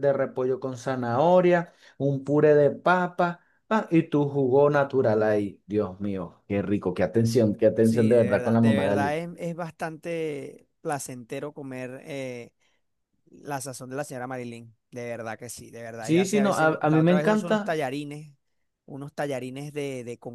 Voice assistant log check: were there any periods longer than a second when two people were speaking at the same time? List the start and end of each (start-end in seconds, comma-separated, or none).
7.8-9.2, 16.1-17.8